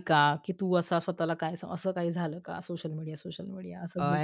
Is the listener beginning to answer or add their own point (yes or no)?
yes